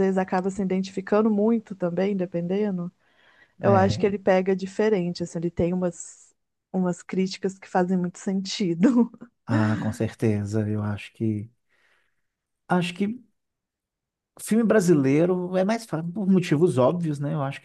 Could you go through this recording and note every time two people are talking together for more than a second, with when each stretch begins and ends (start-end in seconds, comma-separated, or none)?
none